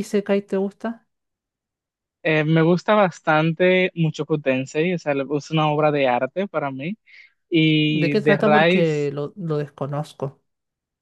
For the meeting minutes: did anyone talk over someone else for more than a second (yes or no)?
yes